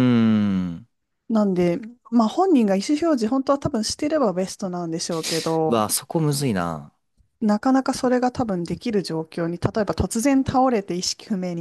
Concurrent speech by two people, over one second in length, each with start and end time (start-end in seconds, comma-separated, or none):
none